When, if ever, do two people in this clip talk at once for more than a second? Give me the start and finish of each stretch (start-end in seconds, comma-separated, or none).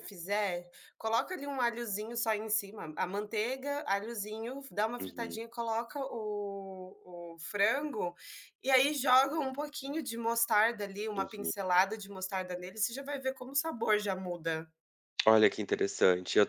none